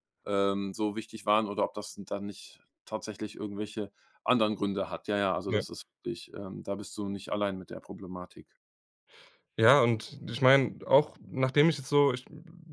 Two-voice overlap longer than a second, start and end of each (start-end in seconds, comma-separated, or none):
none